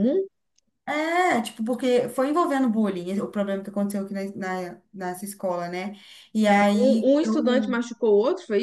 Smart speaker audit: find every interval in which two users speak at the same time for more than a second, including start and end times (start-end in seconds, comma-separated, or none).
6.5-7.8